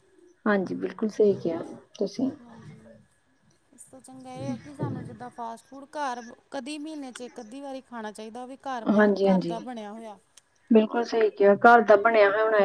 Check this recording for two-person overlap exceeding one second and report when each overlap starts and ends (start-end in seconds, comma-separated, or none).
none